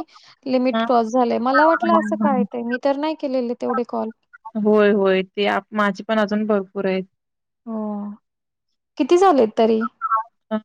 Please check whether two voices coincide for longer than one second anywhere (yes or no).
no